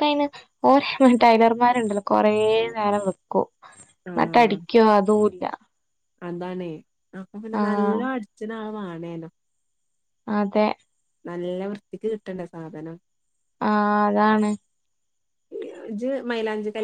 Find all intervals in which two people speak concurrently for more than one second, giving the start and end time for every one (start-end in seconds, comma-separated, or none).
none